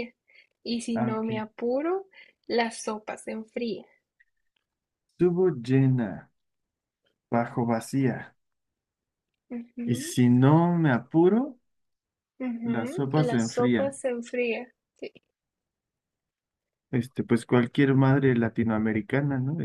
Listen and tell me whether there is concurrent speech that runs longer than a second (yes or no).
yes